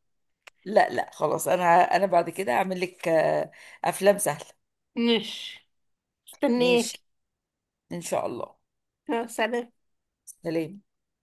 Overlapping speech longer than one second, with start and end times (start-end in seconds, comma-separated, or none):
none